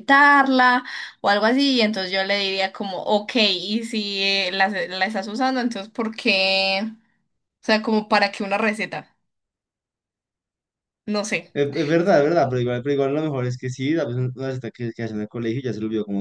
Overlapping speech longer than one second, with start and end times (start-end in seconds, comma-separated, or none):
none